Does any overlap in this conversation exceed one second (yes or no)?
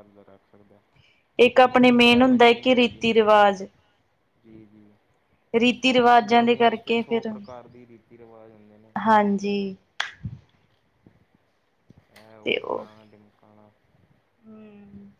yes